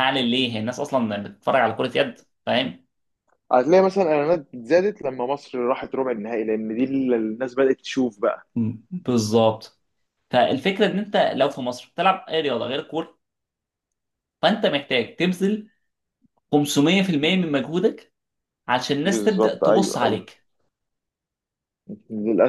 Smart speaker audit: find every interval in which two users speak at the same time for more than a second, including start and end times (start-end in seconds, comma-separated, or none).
19.0-20.3